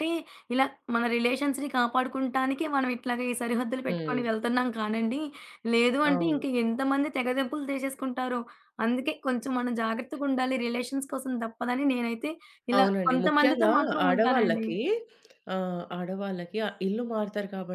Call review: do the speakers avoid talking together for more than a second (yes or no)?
no